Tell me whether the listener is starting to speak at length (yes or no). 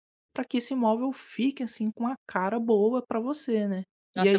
yes